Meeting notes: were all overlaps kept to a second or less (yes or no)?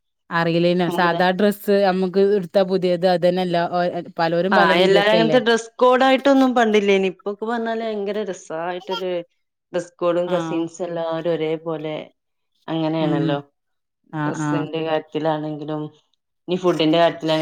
yes